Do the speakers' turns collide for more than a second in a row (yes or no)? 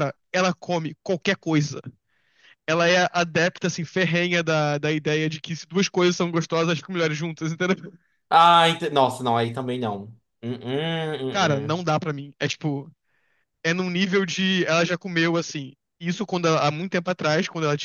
no